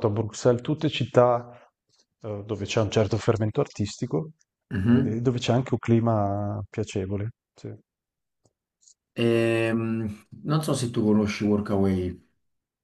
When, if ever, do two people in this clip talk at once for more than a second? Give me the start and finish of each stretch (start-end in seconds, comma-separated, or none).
none